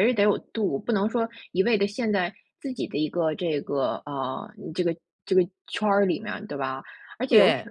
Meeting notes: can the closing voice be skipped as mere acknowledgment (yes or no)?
yes